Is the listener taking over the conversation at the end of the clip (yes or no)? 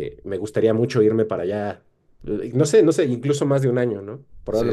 yes